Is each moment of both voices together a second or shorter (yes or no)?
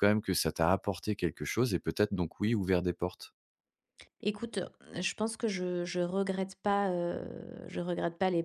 yes